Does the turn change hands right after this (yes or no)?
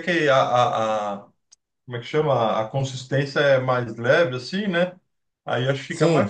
no